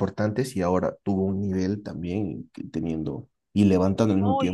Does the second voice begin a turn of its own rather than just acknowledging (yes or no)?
no